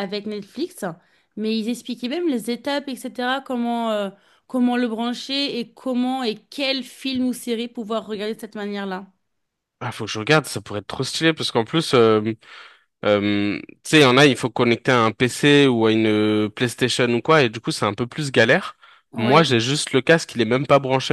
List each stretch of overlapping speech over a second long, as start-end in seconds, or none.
none